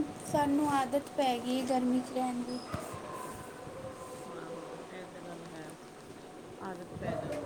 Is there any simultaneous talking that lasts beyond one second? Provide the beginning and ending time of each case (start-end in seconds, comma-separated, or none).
none